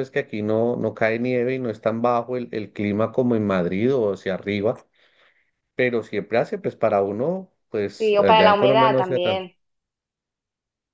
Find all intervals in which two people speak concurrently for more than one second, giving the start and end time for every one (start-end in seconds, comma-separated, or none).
8.0-9.4